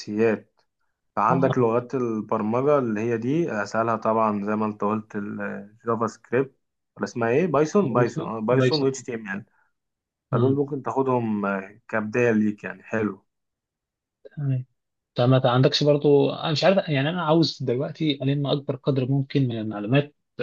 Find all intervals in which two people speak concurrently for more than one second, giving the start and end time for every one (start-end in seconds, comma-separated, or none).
7.8-9.1